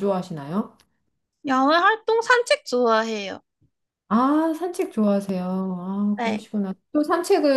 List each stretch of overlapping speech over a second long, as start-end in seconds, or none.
none